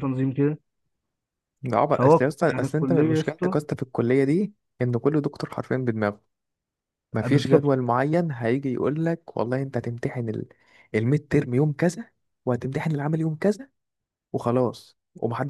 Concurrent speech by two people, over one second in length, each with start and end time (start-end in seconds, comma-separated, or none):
1.9-3.6